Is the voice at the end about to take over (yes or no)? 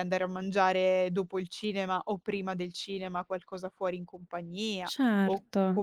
no